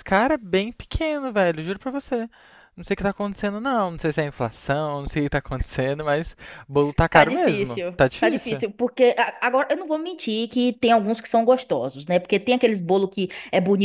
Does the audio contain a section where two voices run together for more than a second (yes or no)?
yes